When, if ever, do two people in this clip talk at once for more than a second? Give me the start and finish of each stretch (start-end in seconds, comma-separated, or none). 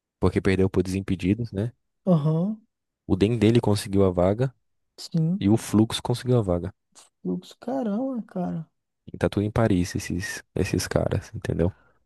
none